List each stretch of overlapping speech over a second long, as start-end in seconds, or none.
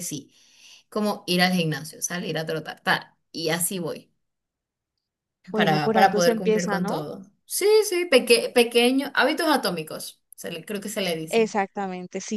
5.5-7.0